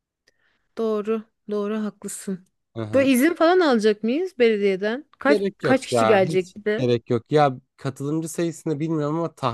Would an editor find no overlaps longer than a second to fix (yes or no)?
no